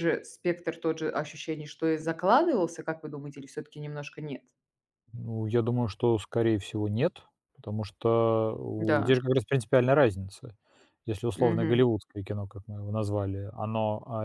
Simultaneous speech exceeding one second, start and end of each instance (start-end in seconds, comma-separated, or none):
none